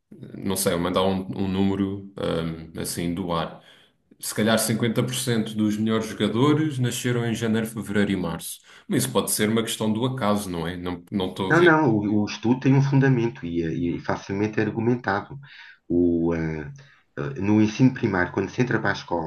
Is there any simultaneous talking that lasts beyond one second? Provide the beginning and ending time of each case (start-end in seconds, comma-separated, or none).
none